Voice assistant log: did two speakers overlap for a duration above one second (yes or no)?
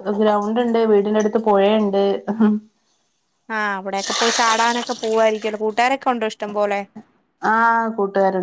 no